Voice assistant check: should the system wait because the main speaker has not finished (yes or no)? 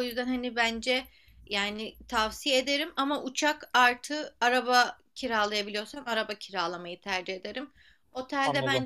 yes